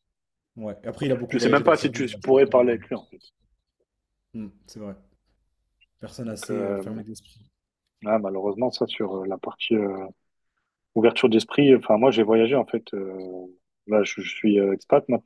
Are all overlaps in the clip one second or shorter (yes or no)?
no